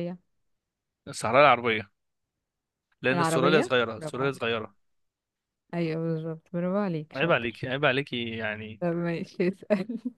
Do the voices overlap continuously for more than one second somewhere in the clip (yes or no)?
yes